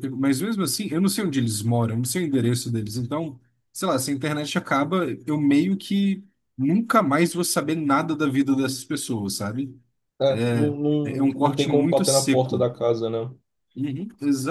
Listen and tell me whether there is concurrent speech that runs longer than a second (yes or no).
yes